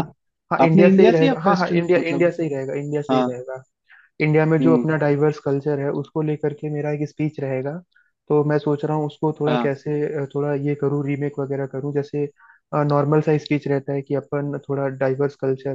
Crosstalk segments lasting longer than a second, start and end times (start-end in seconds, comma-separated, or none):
0.7-2.3